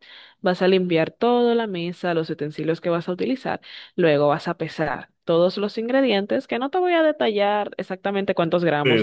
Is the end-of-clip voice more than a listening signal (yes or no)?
yes